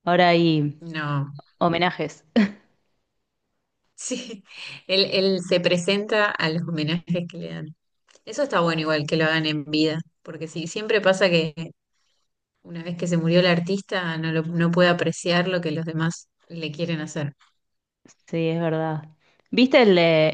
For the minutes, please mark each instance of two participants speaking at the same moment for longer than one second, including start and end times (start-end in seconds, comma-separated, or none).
none